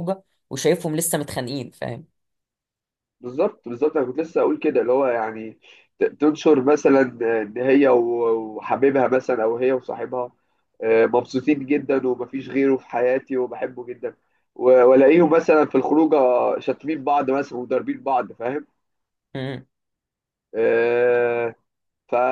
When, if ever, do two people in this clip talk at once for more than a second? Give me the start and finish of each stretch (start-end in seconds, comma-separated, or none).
none